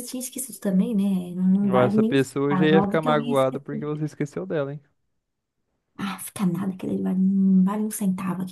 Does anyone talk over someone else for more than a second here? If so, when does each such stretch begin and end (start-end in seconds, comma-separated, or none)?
1.6-4.0